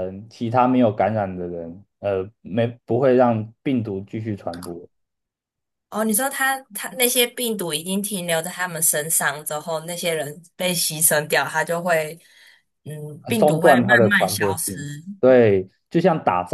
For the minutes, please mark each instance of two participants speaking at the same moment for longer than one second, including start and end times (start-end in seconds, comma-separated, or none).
13.2-15.0